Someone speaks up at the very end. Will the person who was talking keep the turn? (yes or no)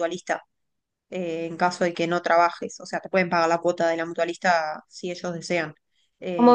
yes